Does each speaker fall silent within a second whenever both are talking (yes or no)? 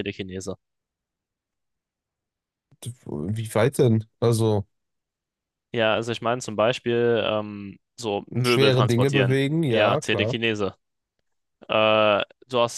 no